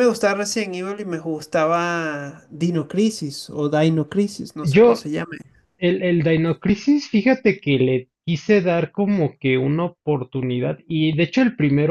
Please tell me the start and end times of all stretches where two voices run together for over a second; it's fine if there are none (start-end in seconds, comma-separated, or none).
none